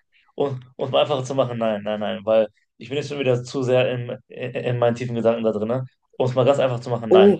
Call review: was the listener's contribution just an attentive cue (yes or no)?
no